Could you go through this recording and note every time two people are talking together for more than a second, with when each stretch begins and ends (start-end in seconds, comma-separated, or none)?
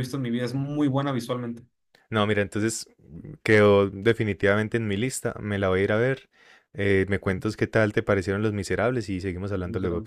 none